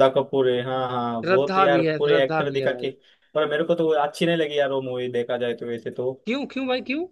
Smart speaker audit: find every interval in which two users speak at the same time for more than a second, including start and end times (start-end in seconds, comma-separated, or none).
1.2-2.9